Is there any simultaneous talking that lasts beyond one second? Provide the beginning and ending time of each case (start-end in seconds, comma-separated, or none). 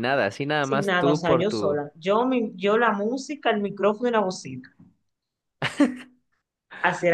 0.6-1.8